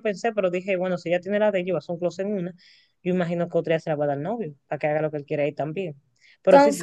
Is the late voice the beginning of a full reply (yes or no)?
no